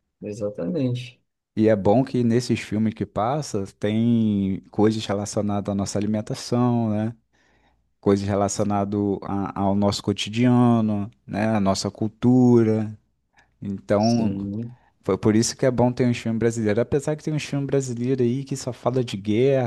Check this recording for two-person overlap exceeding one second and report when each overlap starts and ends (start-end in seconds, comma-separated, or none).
none